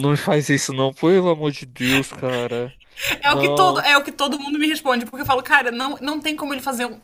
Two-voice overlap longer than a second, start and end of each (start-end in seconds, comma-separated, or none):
none